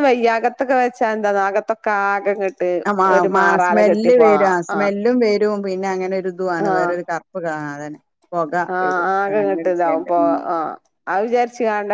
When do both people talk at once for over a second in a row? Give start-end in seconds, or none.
none